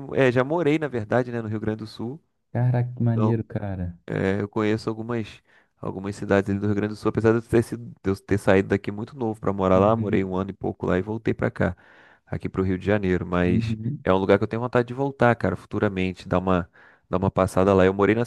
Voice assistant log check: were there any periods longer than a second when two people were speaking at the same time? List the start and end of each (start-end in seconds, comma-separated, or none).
none